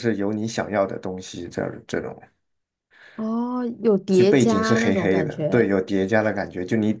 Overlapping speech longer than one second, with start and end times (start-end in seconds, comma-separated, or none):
4.1-5.7